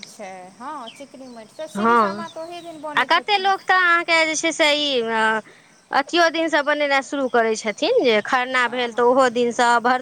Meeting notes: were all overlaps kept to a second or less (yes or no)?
yes